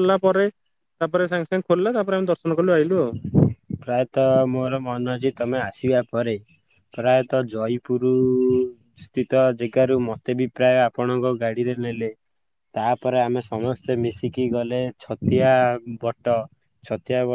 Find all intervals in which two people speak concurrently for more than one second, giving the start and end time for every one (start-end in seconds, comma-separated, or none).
none